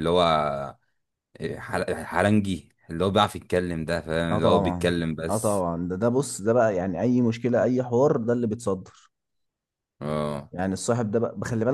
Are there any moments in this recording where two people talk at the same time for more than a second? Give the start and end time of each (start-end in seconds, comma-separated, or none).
4.3-5.7